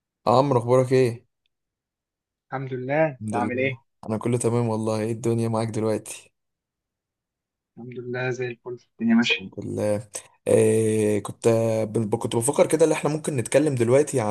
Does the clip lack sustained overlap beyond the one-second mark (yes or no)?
yes